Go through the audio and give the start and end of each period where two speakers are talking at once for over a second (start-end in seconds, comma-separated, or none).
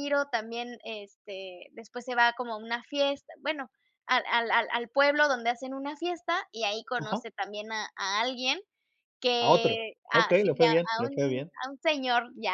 9.4-11.5